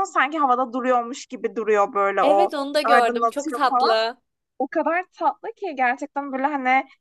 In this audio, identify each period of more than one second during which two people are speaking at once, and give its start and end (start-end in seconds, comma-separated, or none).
2.2-4.0